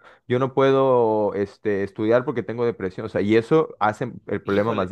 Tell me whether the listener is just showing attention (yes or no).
no